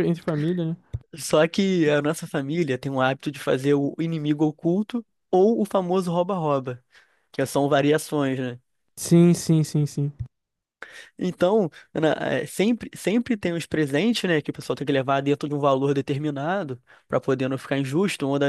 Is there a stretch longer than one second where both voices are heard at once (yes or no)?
no